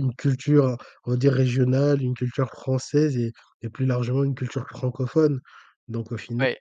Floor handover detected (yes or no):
no